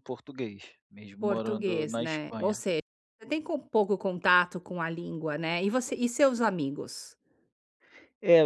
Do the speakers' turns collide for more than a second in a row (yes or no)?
yes